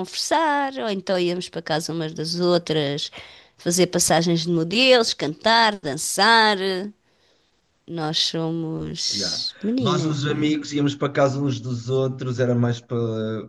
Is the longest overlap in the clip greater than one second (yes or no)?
yes